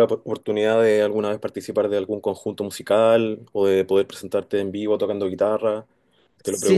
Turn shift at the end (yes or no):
yes